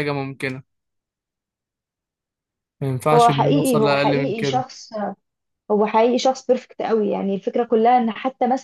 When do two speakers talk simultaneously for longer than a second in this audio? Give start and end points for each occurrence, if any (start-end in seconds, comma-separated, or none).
3.1-4.7